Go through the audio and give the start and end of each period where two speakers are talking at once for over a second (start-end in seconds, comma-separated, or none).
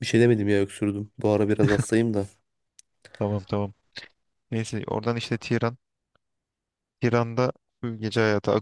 none